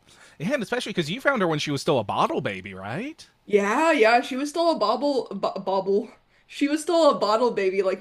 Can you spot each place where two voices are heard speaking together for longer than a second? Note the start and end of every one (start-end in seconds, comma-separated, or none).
none